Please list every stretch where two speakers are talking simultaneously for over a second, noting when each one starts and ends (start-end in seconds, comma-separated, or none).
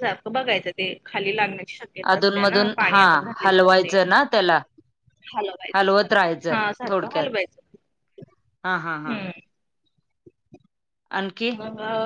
5.7-7.3